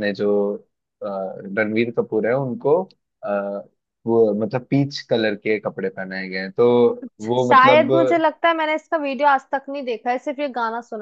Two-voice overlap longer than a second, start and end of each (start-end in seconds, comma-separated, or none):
none